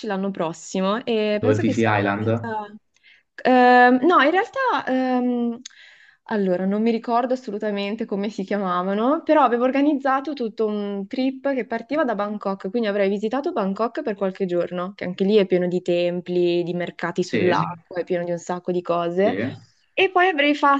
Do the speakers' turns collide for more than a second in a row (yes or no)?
yes